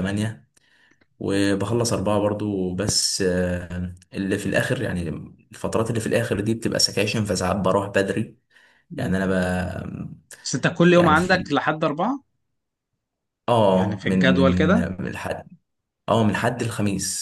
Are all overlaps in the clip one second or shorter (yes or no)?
no